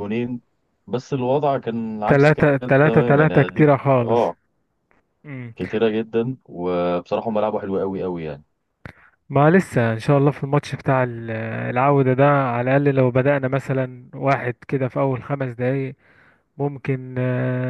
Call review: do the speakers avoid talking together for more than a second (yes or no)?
no